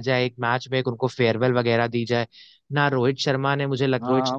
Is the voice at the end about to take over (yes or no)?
yes